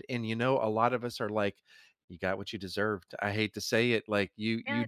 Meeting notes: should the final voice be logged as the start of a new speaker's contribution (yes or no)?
no